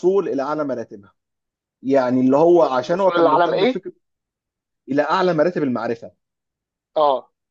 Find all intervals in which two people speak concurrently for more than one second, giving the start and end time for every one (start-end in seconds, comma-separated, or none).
2.3-3.8